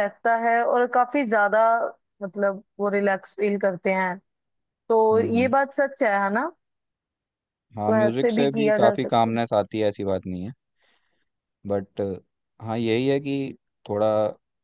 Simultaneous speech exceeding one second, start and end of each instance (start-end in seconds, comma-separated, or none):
7.8-9.4